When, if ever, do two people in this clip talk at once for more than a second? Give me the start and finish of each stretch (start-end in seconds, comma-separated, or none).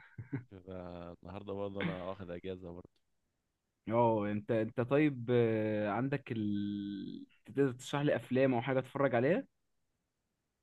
none